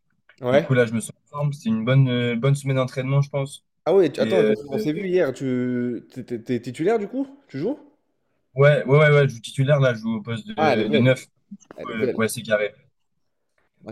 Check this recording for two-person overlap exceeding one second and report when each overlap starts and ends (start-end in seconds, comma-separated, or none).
none